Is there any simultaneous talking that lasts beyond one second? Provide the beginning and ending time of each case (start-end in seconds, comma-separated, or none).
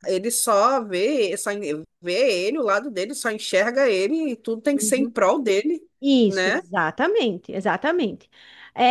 none